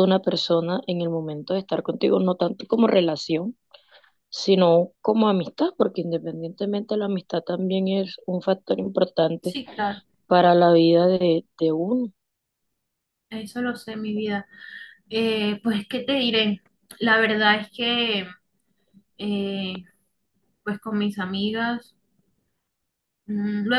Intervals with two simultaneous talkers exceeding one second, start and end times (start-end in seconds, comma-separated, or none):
none